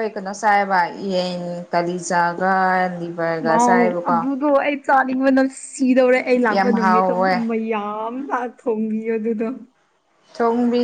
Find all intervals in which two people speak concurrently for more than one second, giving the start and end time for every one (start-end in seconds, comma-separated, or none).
none